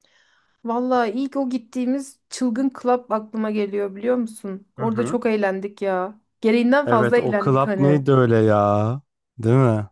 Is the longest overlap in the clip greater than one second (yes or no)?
yes